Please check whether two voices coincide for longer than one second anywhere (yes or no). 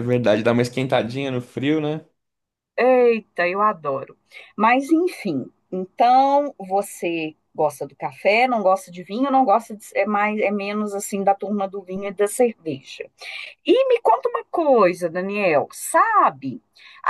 no